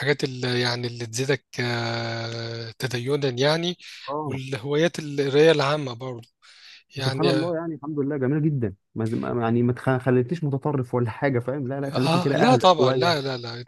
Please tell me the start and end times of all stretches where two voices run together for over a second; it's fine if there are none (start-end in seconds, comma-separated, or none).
11.9-13.2